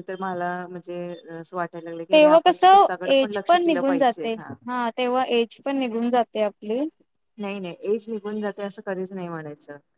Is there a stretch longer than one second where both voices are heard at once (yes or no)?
yes